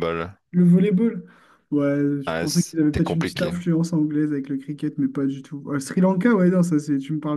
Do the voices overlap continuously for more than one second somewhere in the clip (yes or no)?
yes